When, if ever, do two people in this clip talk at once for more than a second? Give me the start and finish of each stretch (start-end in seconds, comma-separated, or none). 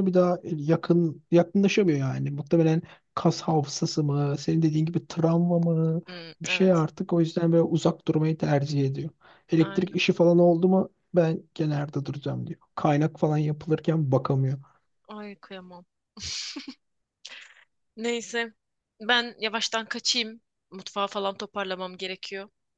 none